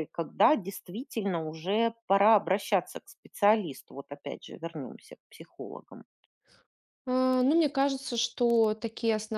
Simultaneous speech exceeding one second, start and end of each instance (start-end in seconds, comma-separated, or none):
none